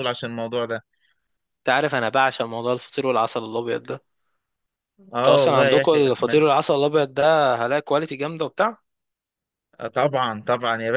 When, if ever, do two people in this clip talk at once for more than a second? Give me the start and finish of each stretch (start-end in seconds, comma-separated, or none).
5.2-6.4